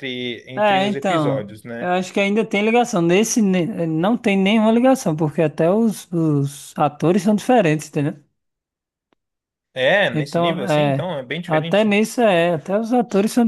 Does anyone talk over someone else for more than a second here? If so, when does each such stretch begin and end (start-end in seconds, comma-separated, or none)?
0.6-1.9, 10.1-11.9